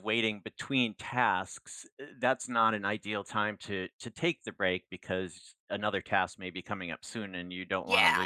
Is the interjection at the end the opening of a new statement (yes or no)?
yes